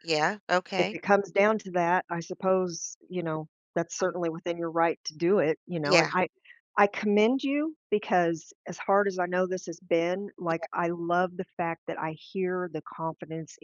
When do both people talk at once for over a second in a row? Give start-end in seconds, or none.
none